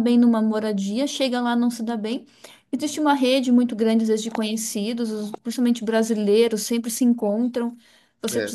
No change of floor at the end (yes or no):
yes